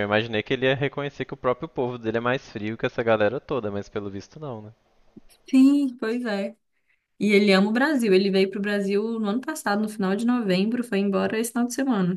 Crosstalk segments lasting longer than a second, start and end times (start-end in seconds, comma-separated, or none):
none